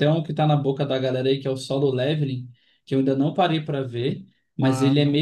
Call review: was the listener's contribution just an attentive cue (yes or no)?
yes